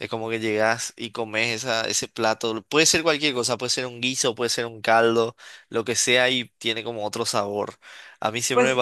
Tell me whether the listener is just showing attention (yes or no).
no